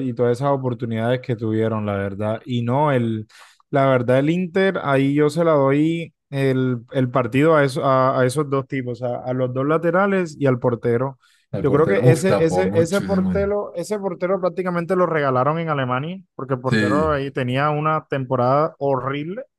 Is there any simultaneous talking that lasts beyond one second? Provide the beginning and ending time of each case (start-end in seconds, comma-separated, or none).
11.6-13.6